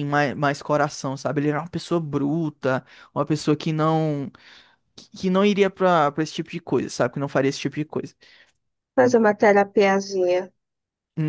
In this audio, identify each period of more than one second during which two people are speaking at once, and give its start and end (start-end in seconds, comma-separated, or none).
none